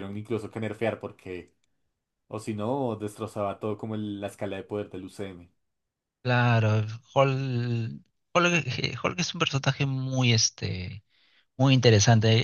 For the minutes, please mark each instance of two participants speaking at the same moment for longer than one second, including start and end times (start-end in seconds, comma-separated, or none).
none